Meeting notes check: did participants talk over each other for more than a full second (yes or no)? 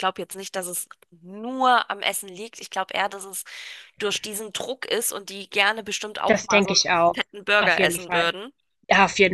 yes